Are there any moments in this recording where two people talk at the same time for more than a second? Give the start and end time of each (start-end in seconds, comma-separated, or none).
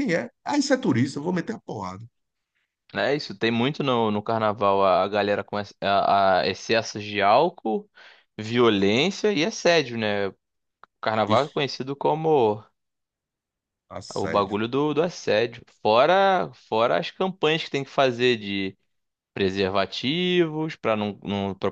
none